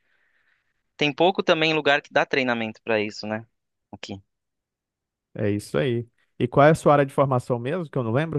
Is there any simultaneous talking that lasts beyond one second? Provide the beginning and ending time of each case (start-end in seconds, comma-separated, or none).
none